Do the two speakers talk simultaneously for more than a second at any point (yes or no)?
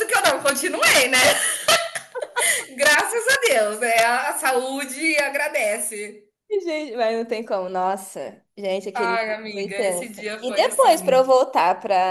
yes